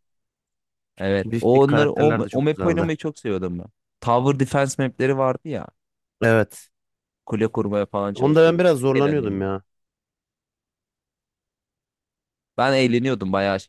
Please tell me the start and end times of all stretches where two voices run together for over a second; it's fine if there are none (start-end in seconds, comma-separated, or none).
1.2-2.9, 8.1-9.5